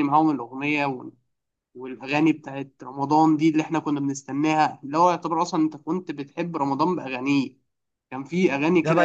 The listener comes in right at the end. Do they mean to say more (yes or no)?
yes